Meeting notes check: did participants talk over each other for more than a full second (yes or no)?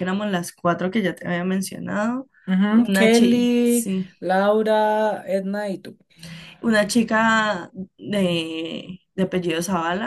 yes